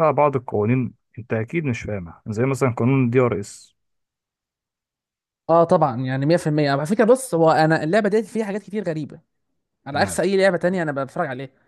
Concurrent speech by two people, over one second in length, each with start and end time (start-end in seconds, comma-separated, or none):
none